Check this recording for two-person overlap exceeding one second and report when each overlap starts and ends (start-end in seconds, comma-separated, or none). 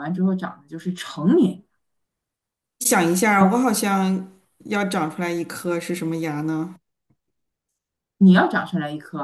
none